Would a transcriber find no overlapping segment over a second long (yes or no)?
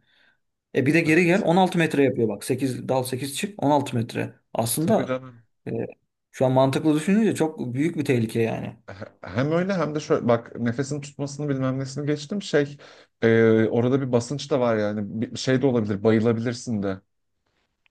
yes